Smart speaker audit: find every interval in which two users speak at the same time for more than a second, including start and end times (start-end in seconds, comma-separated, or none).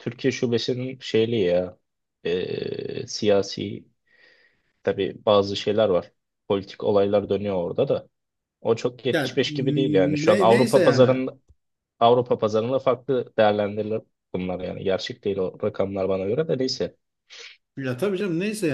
9.1-11.1